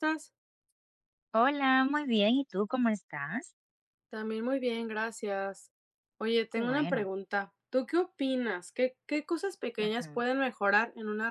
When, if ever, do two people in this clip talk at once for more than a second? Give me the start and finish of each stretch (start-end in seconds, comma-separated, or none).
none